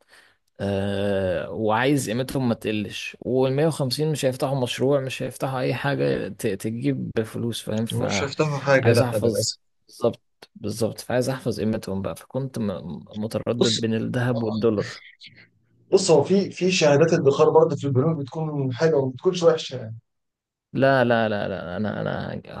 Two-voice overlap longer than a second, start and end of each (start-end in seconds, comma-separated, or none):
7.9-9.5